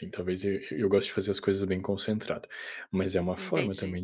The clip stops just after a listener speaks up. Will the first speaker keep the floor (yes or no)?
yes